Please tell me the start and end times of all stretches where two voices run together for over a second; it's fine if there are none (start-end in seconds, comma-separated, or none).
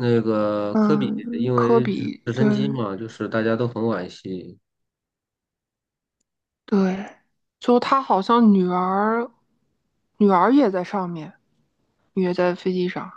0.7-2.5